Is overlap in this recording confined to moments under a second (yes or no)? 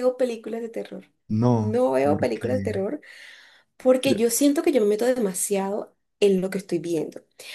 no